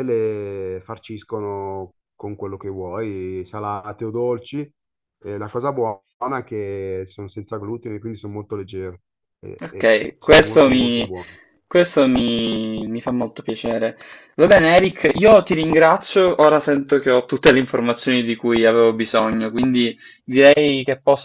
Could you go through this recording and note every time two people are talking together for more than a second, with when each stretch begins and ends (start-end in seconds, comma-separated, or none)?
9.6-11.1